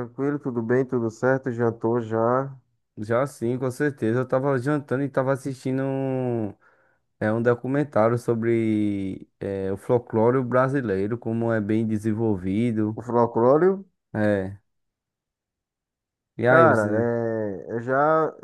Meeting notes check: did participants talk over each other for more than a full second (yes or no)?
no